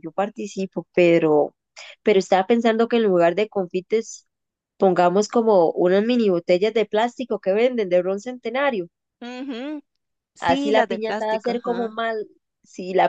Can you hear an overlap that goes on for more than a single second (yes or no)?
yes